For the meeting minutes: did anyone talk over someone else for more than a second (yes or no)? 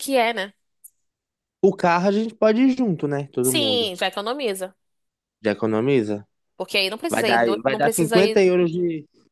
yes